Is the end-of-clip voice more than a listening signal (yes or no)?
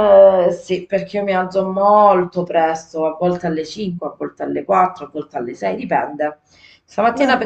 no